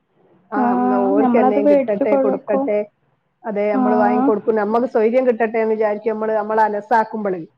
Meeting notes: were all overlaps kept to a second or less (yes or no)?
no